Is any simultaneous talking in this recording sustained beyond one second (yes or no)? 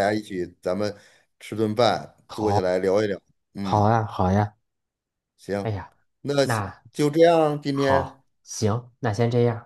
no